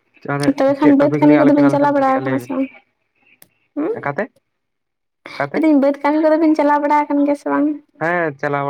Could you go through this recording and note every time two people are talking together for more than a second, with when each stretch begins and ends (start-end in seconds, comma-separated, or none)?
0.6-2.5